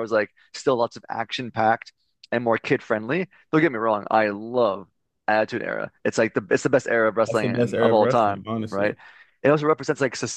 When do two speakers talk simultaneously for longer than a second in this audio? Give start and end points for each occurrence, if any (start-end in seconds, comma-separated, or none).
7.3-8.9